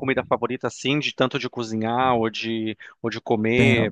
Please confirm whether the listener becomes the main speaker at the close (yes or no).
yes